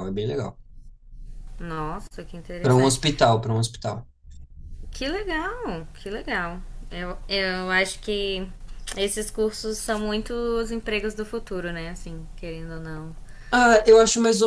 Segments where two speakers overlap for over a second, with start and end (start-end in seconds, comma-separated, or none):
none